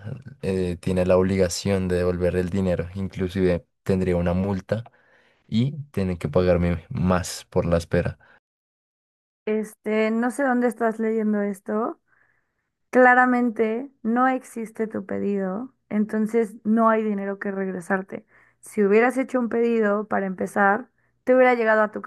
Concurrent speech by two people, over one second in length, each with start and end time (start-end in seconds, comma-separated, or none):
none